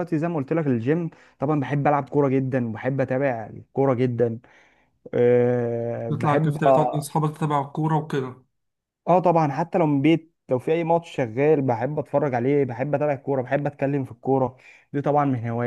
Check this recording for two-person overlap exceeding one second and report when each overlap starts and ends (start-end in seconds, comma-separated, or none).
none